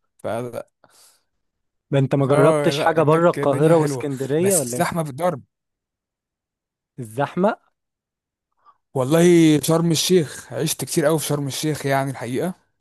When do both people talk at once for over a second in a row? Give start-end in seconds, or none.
2.3-4.9